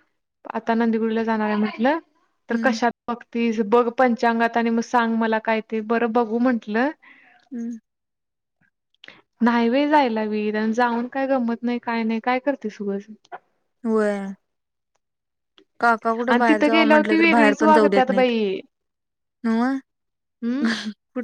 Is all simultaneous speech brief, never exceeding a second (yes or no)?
no